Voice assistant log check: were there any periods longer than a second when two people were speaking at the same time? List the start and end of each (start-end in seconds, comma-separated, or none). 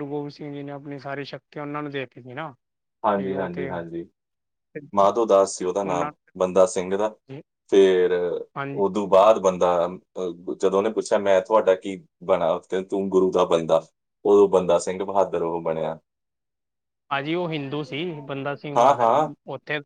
none